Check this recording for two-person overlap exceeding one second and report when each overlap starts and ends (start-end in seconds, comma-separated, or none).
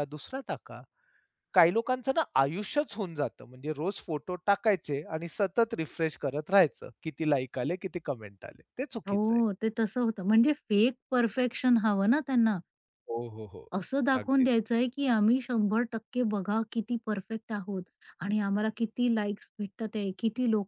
none